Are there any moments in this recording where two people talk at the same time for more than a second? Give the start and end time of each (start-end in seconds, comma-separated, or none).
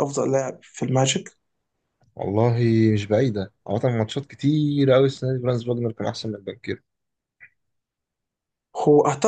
none